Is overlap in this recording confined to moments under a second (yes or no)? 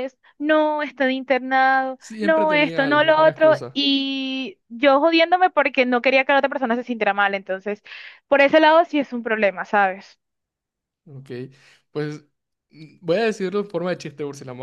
no